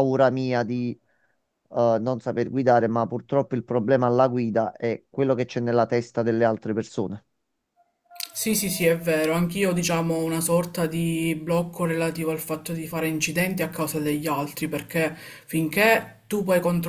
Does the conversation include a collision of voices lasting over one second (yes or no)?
no